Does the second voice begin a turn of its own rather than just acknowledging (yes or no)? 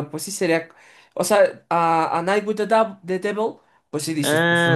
yes